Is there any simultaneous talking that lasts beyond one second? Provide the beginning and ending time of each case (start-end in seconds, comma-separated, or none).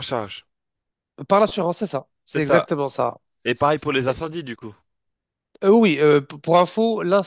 none